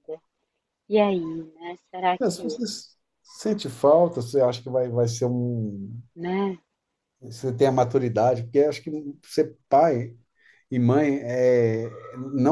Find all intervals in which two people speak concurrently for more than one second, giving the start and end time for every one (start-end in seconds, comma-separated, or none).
none